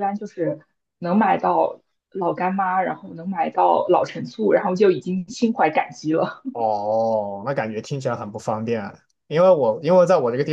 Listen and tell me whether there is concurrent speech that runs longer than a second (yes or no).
no